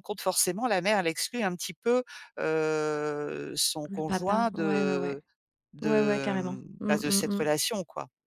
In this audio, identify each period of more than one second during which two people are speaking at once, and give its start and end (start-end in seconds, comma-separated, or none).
3.9-5.2, 5.8-7.5